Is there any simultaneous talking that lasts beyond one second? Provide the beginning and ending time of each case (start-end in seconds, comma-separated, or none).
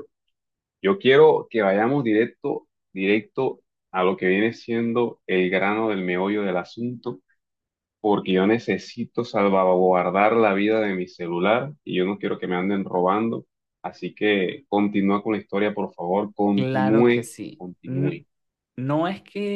16.5-18.2